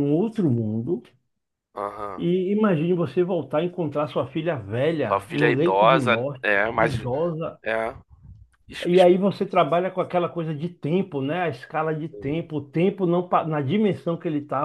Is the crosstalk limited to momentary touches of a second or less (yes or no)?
no